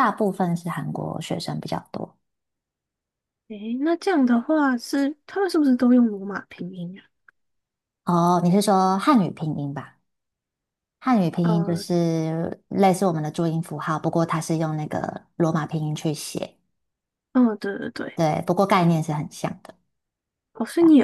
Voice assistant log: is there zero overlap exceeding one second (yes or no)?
yes